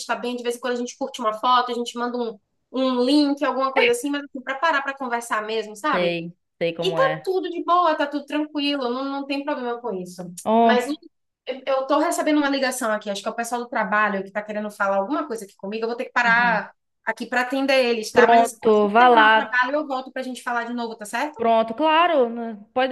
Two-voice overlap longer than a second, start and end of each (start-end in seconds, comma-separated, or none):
18.1-19.6